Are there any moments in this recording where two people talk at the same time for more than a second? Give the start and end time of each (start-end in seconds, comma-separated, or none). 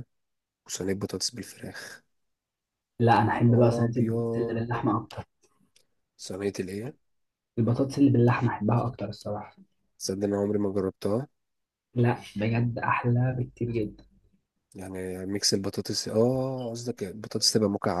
3.3-4.6